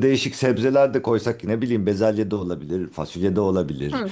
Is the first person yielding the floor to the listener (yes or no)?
yes